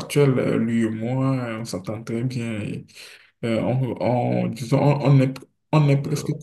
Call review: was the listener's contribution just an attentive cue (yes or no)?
yes